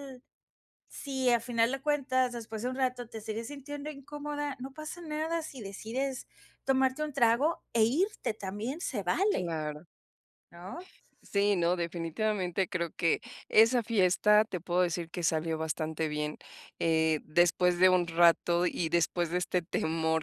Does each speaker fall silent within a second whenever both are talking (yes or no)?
yes